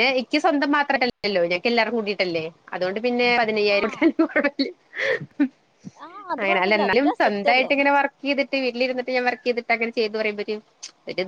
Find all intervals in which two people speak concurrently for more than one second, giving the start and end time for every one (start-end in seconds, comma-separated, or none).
6.4-7.7